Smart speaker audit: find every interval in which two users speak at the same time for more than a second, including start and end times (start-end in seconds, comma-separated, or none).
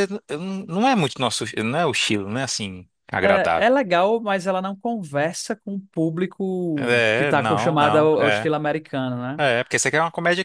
6.8-8.5